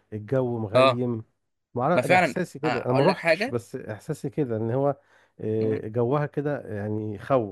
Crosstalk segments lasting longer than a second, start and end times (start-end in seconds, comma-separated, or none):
1.9-3.6